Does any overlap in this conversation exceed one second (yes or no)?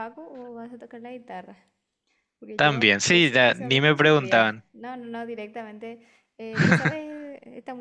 yes